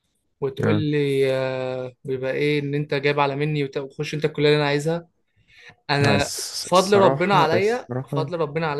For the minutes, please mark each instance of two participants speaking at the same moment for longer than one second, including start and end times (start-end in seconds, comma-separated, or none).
6.0-8.3